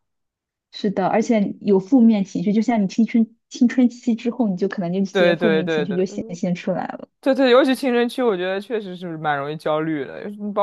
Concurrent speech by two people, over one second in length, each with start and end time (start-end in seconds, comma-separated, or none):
5.1-6.4